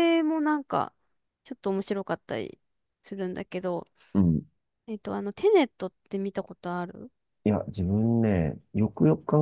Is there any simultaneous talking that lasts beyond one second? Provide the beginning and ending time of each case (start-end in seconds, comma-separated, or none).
none